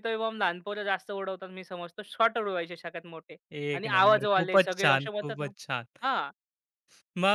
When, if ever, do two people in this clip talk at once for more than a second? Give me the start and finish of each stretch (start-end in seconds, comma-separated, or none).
3.7-5.5